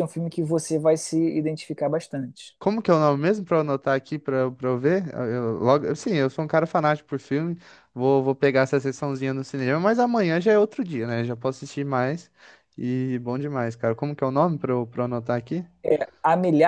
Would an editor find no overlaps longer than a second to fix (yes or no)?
yes